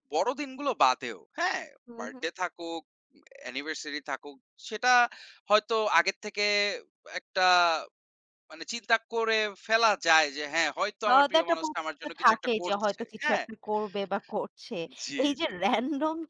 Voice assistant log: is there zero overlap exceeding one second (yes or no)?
no